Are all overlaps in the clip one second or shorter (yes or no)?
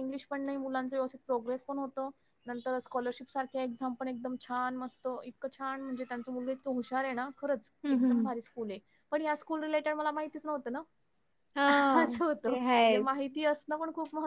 no